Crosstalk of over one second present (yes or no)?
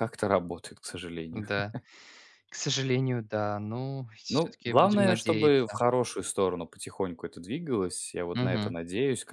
yes